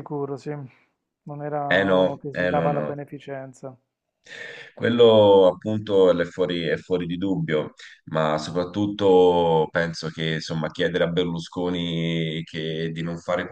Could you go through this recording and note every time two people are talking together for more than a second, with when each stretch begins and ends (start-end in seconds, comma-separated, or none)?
1.7-3.0